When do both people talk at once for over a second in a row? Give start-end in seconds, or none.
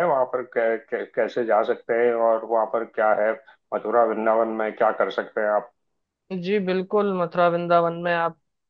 none